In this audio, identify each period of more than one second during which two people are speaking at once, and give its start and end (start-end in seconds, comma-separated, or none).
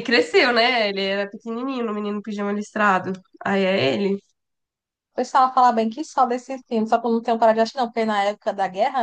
none